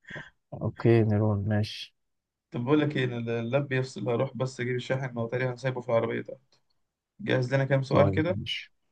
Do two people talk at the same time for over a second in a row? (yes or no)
no